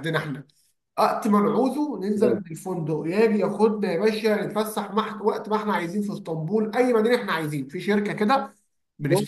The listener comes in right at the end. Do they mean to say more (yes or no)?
no